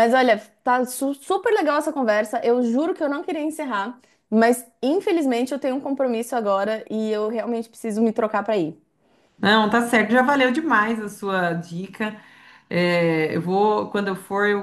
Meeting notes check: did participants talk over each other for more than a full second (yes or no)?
no